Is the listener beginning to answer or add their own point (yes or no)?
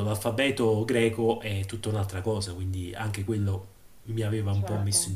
yes